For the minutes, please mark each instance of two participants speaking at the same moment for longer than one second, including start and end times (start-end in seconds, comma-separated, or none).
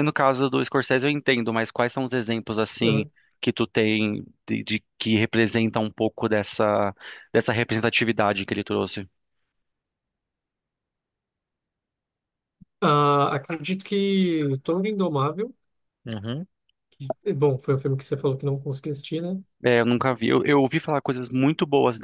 none